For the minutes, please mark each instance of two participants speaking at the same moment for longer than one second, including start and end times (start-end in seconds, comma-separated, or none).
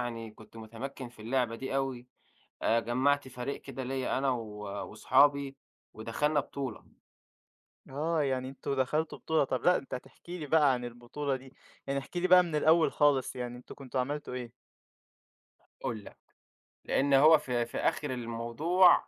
none